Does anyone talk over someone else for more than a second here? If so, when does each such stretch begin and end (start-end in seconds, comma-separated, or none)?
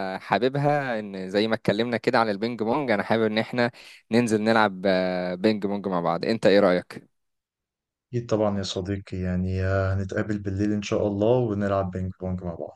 none